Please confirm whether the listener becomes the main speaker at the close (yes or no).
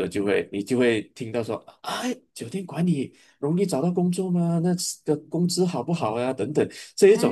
yes